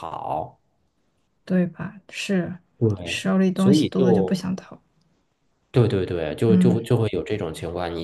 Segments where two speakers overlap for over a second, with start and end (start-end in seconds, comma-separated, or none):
3.0-4.4